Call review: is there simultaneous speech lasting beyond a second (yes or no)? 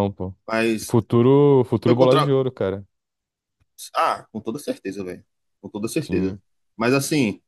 no